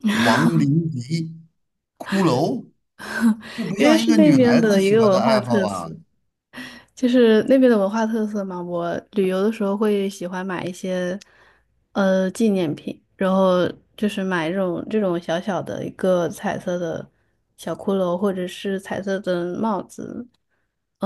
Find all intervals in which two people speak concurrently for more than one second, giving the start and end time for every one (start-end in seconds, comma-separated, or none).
3.8-5.9